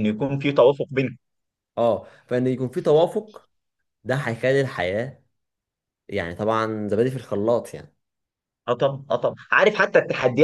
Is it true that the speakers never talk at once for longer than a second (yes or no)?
yes